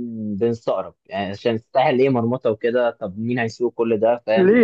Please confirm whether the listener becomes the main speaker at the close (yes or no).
yes